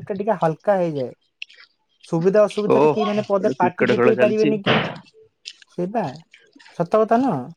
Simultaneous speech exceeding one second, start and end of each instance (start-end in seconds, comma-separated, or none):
2.7-4.5